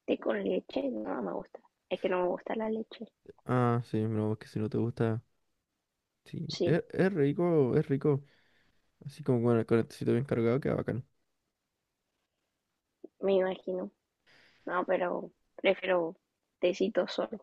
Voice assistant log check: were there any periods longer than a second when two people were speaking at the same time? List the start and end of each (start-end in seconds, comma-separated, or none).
none